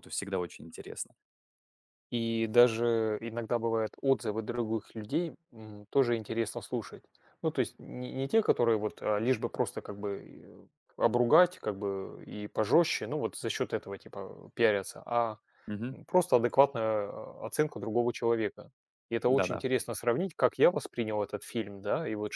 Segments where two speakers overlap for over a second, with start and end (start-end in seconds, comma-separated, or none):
none